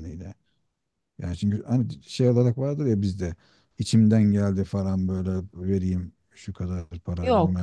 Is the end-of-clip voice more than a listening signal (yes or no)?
yes